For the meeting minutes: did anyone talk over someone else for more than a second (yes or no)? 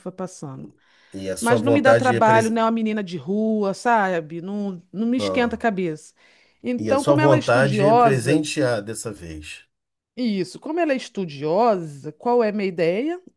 yes